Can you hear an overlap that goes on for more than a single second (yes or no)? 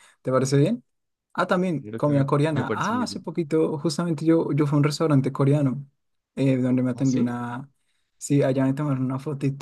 yes